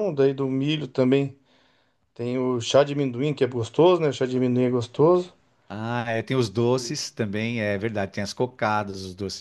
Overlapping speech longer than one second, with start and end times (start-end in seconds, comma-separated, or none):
none